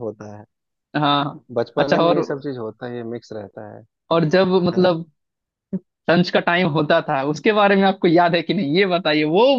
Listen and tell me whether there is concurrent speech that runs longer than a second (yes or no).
no